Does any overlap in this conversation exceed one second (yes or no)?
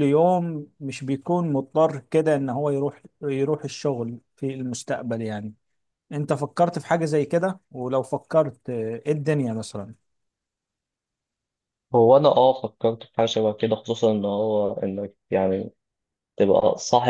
no